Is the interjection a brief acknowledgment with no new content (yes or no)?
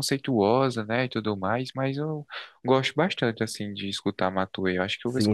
no